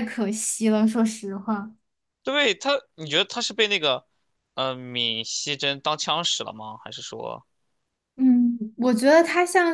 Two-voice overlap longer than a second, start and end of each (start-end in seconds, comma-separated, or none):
none